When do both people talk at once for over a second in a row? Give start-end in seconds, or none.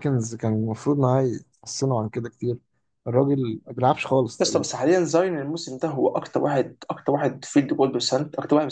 none